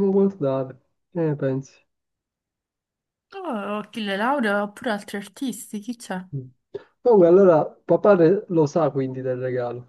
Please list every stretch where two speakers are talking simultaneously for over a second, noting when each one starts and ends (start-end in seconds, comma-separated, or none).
none